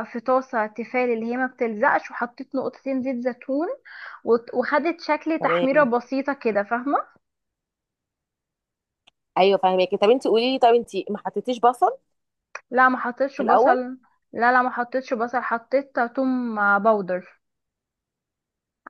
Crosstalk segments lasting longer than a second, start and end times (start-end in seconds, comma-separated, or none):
none